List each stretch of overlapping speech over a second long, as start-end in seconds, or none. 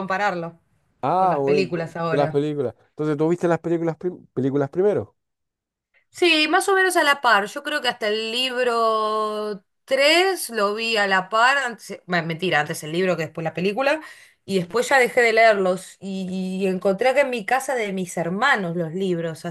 1.1-2.5